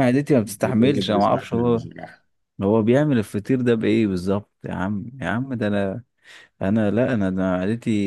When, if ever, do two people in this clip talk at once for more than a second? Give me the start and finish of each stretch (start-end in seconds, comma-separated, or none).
0.5-1.8